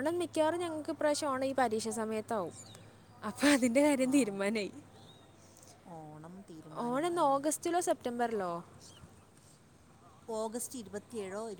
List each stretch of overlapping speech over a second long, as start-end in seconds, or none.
none